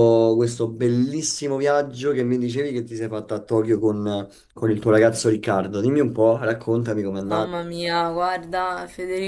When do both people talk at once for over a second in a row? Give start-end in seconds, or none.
none